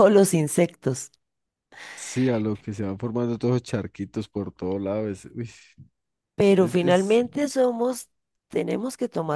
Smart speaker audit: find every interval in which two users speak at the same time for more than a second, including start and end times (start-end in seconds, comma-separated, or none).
none